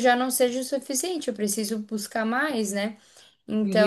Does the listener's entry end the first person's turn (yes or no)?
yes